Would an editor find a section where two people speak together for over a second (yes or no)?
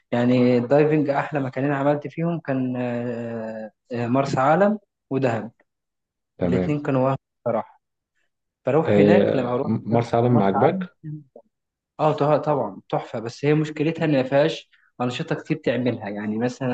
yes